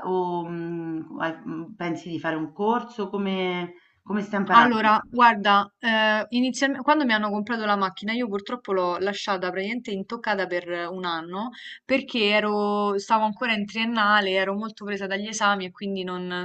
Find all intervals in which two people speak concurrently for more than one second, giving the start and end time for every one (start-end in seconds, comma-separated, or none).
none